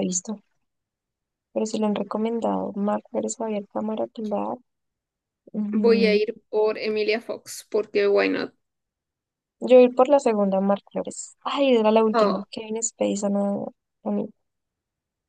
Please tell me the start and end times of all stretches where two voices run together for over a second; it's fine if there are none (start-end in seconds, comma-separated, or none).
none